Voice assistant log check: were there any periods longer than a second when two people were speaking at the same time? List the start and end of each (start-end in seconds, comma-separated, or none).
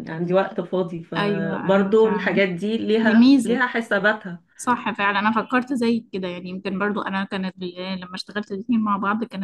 1.2-2.4